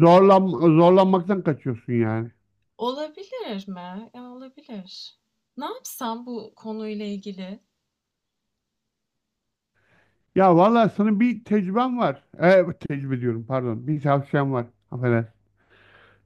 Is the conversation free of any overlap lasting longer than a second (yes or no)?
yes